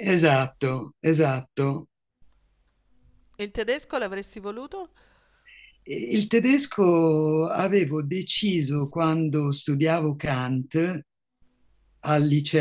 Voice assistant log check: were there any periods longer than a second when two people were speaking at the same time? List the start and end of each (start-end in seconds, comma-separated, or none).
none